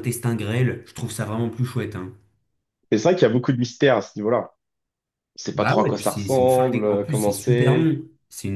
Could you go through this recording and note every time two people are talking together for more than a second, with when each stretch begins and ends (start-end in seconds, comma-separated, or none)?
5.5-7.9